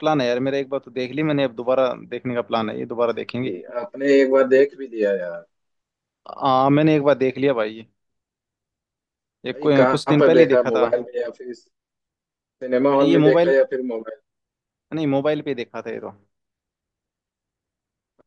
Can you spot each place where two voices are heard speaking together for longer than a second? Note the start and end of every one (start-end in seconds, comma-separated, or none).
9.5-10.9